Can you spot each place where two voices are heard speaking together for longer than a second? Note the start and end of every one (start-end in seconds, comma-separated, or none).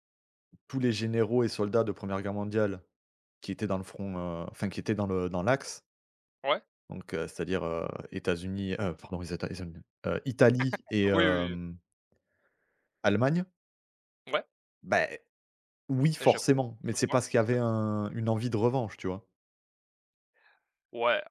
16.2-17.7